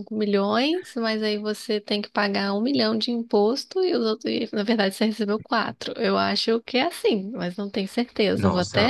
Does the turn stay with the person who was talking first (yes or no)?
no